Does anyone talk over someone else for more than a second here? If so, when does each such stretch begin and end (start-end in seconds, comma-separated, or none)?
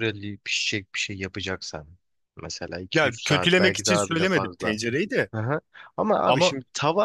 2.9-4.8